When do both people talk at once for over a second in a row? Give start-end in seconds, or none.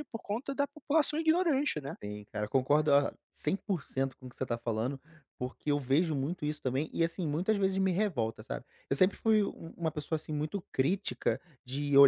none